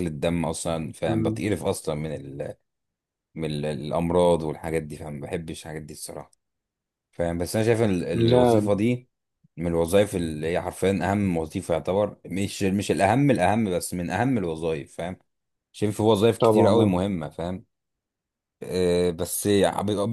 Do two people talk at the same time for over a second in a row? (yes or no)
no